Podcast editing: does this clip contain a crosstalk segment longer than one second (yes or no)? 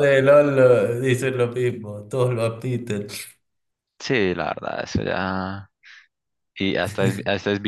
no